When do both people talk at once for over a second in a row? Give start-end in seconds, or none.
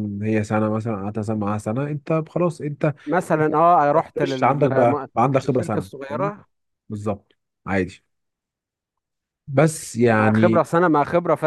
4.2-6.3